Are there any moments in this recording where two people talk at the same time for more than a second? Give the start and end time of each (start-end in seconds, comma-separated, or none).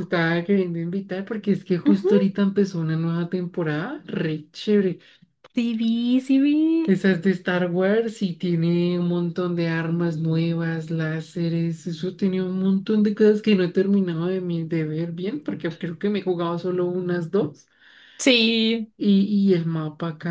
none